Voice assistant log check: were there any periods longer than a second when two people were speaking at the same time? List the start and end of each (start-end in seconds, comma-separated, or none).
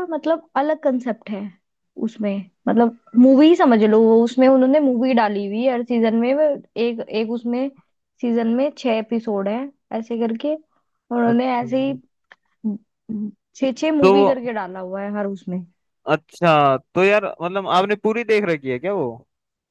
none